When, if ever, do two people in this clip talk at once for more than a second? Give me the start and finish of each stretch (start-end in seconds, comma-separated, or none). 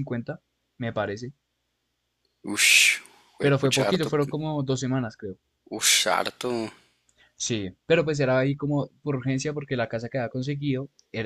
none